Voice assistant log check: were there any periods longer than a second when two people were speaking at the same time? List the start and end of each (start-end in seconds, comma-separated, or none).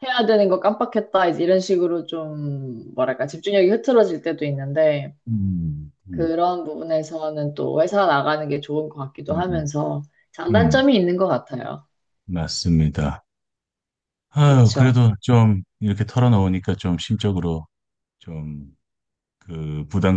none